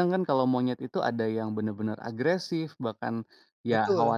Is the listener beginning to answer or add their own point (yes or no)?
no